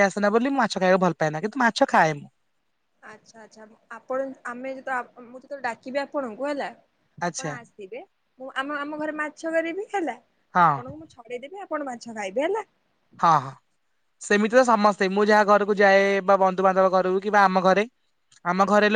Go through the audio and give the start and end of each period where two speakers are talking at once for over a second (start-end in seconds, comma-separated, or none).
none